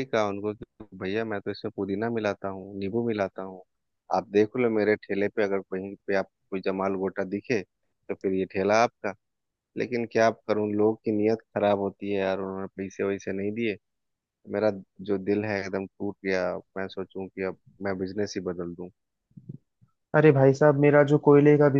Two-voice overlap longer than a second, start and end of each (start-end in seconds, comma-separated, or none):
none